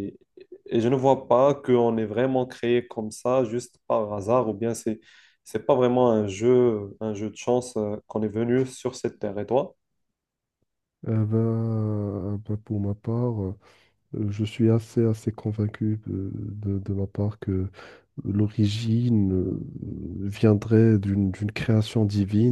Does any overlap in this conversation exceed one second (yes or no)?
no